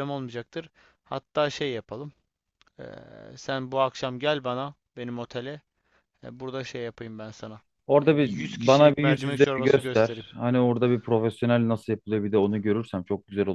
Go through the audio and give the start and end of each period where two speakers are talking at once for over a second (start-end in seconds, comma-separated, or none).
8.0-10.2